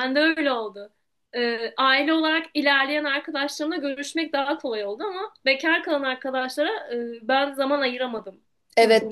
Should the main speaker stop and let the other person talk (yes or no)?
yes